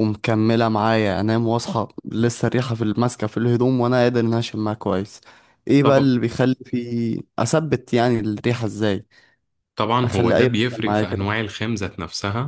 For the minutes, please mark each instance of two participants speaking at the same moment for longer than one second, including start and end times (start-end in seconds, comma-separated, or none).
10.0-11.3